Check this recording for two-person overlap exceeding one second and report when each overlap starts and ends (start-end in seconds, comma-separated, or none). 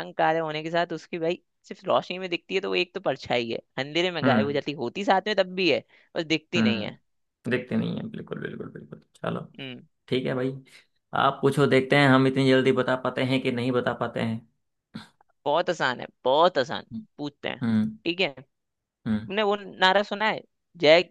none